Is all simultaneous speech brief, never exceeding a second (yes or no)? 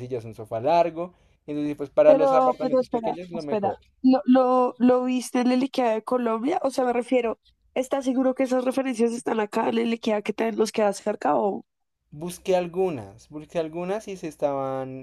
no